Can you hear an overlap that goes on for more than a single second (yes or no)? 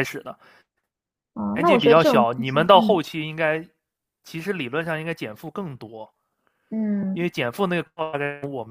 yes